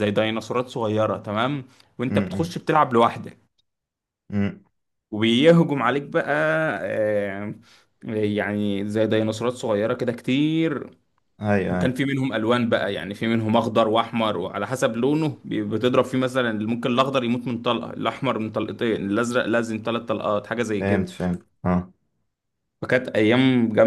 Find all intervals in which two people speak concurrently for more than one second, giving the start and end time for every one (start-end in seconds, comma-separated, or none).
none